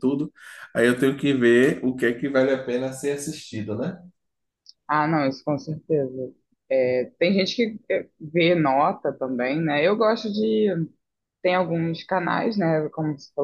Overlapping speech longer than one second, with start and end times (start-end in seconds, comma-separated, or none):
none